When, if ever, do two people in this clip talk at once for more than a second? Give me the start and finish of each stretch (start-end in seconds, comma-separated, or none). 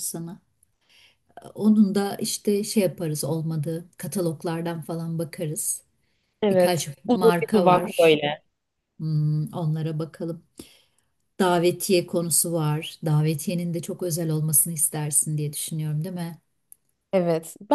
6.5-8.2